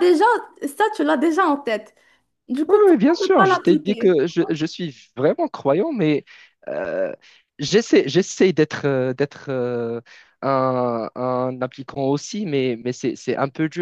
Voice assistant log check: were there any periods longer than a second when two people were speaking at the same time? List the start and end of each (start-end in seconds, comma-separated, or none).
2.7-4.2